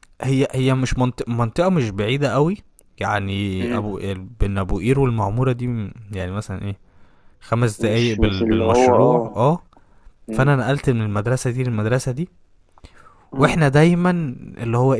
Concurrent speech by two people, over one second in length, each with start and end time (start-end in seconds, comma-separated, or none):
7.8-9.3